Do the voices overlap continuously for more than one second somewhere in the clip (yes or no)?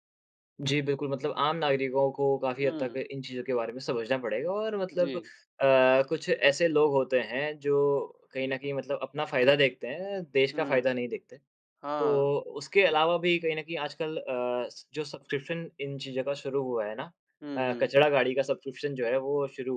no